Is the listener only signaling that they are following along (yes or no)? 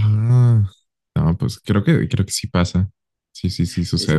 no